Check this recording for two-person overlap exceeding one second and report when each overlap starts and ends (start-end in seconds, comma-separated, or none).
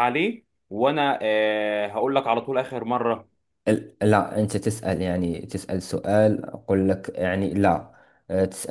none